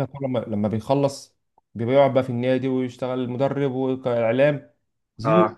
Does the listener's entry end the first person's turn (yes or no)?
no